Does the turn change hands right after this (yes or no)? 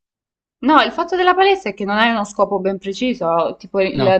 no